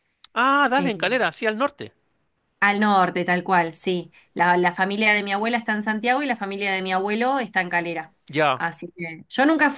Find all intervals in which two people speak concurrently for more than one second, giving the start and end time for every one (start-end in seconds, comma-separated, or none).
none